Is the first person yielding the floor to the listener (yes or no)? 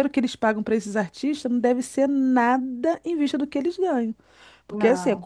no